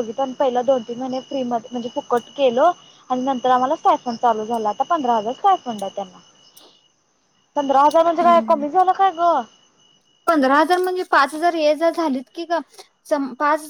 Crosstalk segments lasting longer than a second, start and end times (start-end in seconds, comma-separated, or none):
none